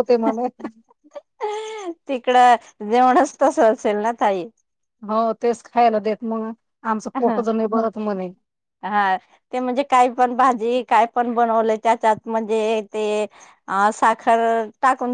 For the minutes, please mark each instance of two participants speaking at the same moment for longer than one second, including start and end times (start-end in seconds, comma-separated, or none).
none